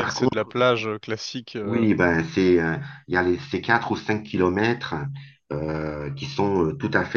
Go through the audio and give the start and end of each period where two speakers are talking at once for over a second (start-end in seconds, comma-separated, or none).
none